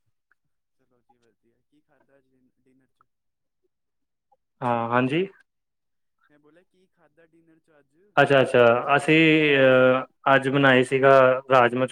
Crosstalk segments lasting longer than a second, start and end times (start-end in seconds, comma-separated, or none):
none